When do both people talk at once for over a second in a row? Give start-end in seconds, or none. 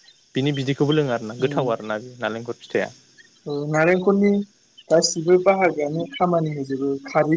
none